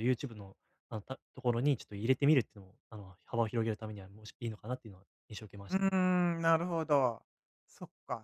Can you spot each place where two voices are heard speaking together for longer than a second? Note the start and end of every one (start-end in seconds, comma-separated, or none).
none